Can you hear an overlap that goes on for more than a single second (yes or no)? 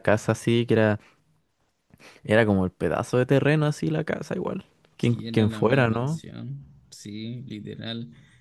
yes